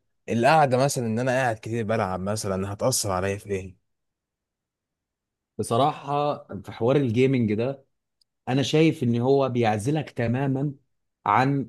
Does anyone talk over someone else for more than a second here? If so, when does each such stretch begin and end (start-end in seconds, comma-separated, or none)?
none